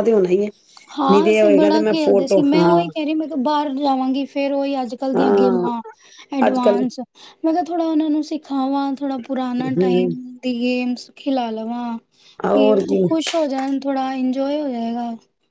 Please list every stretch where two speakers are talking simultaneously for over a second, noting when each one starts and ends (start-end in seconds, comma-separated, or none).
1.1-2.7